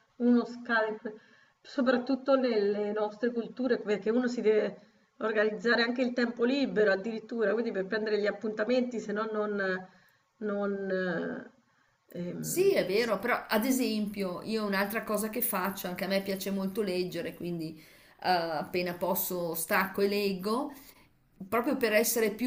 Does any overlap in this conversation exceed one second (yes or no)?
no